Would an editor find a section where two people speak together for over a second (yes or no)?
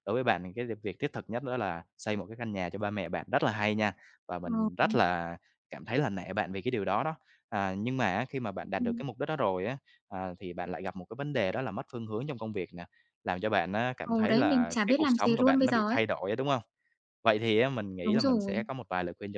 yes